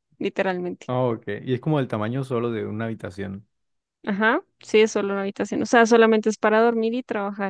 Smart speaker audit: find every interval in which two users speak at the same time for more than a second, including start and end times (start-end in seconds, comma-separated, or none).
none